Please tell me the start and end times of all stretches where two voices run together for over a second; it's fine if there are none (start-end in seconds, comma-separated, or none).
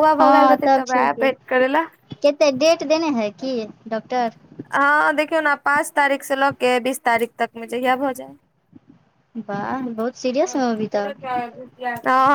none